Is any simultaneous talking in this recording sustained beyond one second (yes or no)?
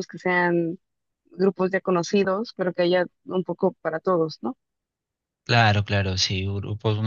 no